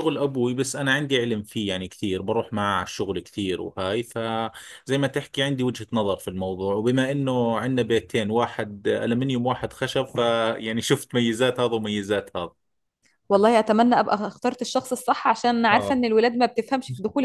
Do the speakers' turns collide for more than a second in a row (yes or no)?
no